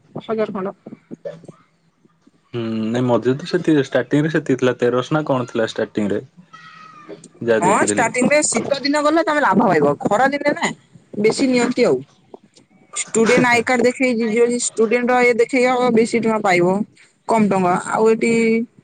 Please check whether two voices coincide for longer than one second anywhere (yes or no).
no